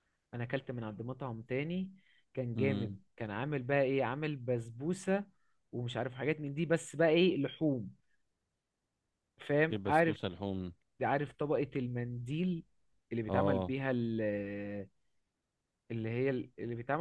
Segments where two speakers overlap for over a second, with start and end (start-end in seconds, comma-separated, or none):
none